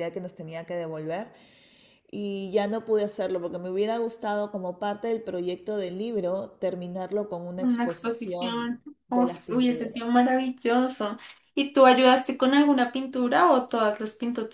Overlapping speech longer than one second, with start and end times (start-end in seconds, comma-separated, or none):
7.6-10.0